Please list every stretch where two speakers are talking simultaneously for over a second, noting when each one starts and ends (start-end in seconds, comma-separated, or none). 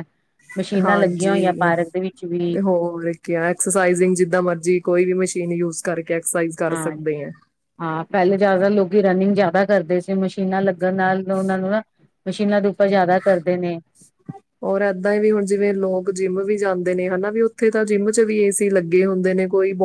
none